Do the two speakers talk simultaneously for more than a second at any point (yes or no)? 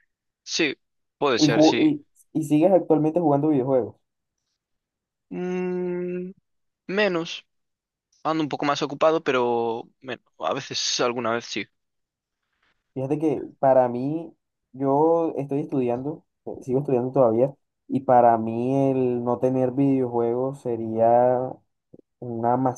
no